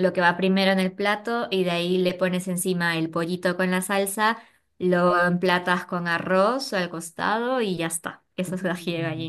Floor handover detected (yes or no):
yes